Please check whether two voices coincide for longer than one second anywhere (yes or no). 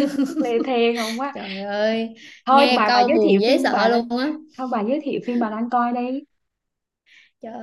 yes